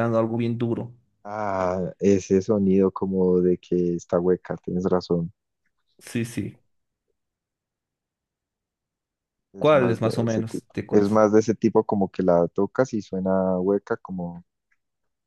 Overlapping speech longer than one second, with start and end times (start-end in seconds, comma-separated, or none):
9.6-11.2